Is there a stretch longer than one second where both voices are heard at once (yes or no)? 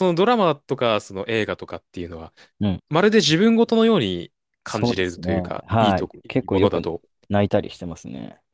yes